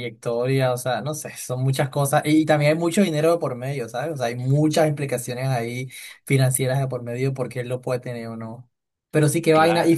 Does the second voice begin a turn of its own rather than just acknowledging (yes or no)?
no